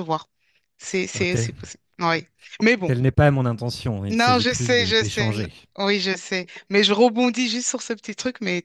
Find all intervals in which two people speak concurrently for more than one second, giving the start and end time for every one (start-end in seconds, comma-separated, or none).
4.1-5.5